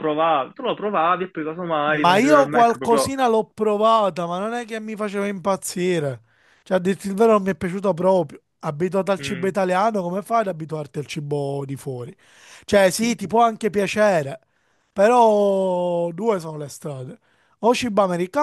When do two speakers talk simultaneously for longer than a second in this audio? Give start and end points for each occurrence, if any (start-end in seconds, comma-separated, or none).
1.9-3.1